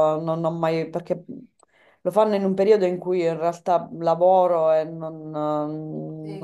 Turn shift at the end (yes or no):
yes